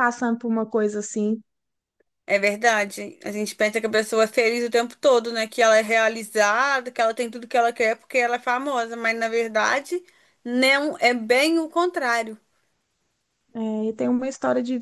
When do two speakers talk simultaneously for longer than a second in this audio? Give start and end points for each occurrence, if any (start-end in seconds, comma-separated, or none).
none